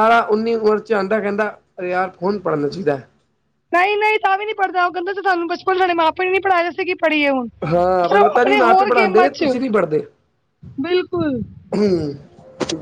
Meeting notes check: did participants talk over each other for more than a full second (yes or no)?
yes